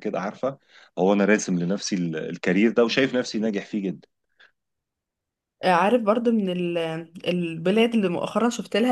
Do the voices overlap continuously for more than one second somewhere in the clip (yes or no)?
no